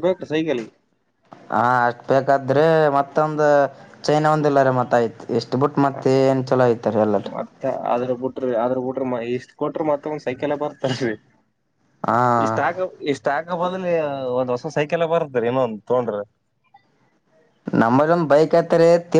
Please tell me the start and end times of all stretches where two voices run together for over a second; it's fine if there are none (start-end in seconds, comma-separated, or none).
none